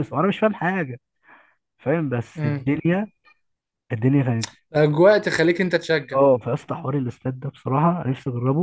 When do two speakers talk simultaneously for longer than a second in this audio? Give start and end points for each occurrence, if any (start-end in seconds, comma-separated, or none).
none